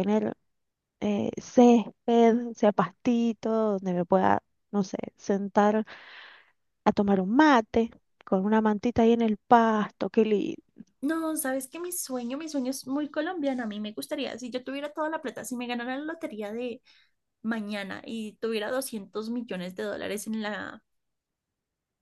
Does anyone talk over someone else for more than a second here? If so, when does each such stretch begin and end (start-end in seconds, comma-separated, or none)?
none